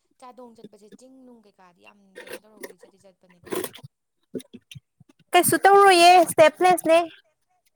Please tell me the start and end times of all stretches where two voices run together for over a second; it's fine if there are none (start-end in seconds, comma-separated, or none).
none